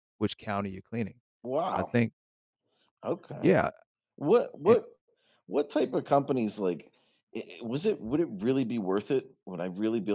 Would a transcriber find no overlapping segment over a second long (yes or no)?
yes